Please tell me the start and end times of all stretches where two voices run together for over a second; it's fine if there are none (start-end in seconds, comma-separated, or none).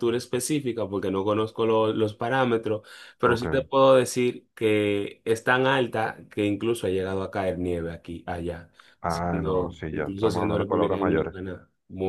9.1-11.3